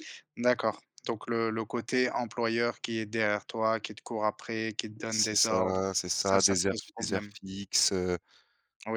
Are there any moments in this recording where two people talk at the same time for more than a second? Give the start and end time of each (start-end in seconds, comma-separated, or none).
5.1-7.3